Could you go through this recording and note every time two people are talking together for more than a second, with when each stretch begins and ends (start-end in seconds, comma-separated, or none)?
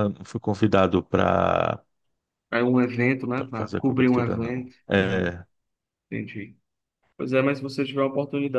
3.5-5.3